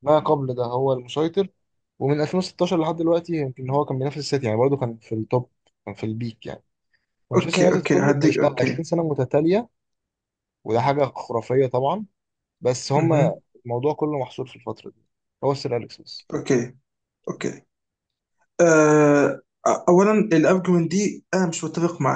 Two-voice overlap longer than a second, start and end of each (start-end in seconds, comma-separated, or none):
7.3-8.8